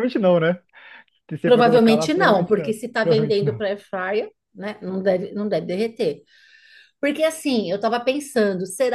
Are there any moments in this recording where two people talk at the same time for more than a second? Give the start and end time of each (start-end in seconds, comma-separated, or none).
1.4-3.6